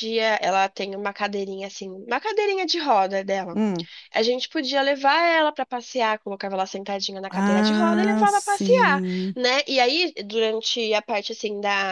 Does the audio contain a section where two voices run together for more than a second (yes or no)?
yes